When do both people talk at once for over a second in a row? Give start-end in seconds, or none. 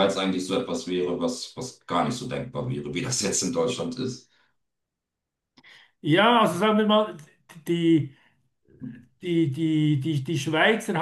none